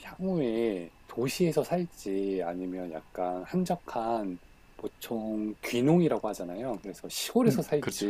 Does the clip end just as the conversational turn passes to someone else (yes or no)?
no